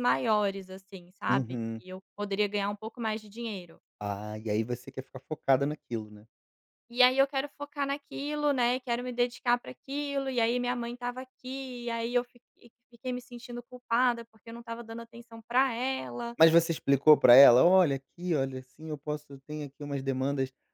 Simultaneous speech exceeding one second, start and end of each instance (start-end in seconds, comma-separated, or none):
none